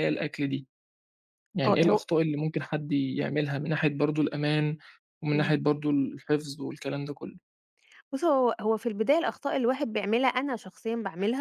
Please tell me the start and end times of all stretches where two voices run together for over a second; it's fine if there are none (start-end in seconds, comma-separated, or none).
none